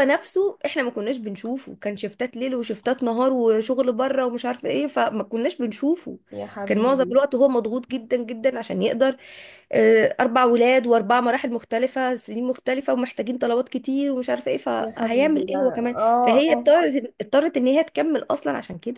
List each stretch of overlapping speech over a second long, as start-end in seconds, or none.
14.8-16.7